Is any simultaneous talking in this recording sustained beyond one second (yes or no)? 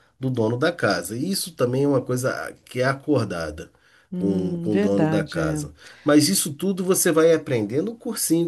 yes